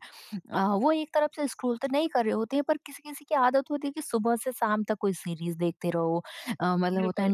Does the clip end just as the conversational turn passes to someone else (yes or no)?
no